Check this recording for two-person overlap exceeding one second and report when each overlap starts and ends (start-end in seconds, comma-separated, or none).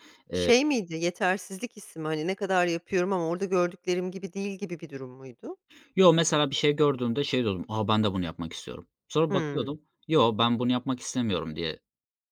none